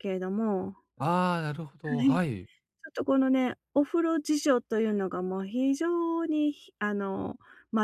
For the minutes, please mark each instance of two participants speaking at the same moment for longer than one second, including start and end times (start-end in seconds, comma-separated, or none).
none